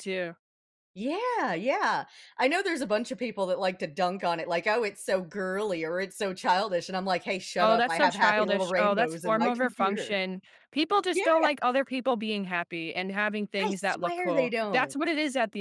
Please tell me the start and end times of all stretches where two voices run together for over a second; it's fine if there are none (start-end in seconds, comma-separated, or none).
7.6-10.2, 13.6-15.0